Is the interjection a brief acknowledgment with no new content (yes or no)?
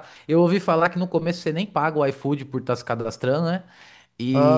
yes